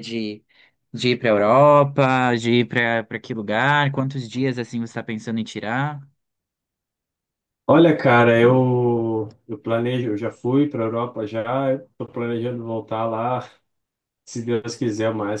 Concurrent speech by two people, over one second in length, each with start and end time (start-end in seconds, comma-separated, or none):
none